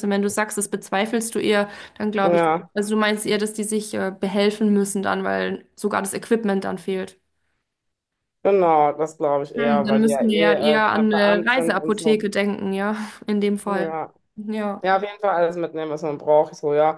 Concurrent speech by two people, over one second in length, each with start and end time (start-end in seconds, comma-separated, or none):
9.6-12.2